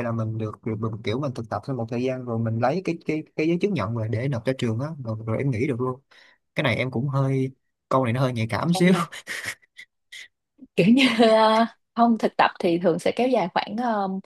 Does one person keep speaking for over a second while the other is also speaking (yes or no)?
no